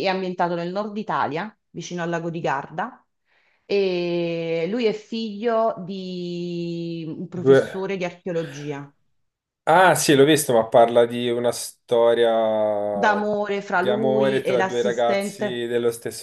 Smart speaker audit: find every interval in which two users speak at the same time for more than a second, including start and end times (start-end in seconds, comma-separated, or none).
13.7-15.6